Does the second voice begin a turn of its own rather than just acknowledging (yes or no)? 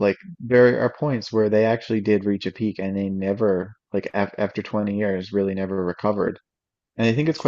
no